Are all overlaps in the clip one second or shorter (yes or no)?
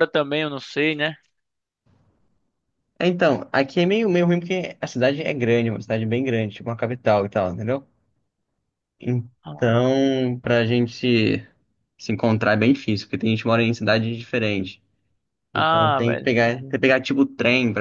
no